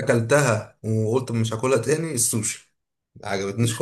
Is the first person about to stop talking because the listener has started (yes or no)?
yes